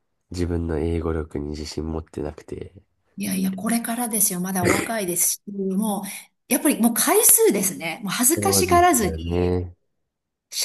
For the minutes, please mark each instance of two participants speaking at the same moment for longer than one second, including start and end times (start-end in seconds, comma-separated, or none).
8.4-9.6